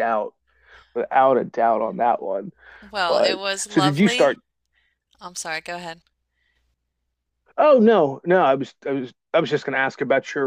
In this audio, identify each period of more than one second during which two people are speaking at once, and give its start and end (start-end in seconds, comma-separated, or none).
3.1-4.3